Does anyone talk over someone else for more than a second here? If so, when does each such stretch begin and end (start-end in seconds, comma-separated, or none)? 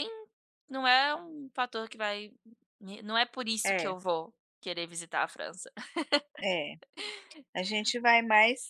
none